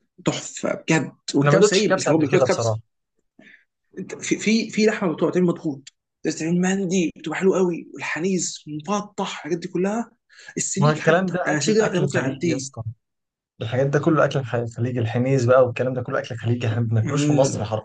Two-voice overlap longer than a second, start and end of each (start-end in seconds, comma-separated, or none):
1.4-2.8, 10.8-12.7